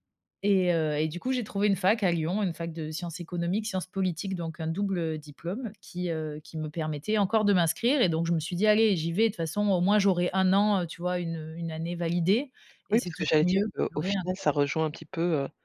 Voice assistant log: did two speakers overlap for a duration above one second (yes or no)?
yes